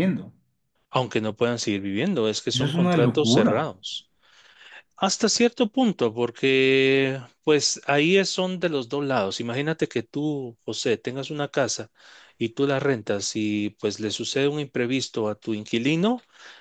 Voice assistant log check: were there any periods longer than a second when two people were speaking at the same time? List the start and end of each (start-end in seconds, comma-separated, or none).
2.5-3.7